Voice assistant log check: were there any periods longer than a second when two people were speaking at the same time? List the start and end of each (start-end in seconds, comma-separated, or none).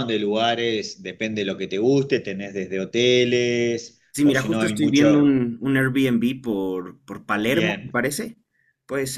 4.1-5.4